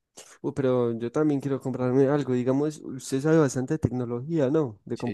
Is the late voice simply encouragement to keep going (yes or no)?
no